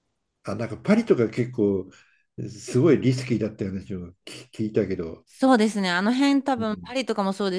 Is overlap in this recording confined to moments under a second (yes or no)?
yes